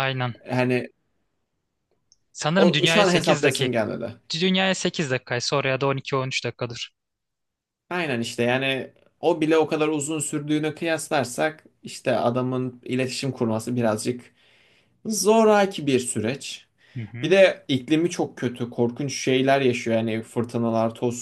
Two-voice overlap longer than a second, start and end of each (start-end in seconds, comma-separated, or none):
2.5-3.8